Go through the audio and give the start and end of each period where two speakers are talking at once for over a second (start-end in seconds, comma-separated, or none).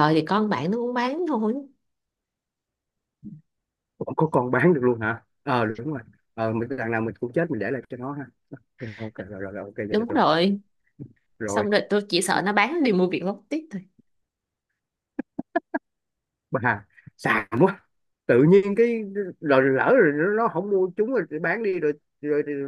none